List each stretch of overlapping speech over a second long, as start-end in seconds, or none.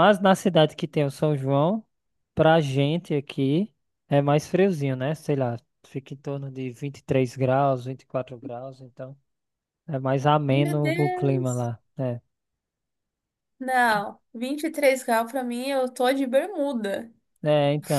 10.5-11.7